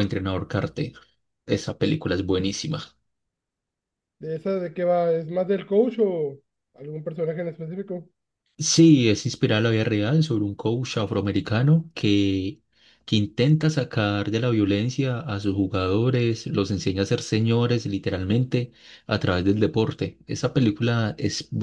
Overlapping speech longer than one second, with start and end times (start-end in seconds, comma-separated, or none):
none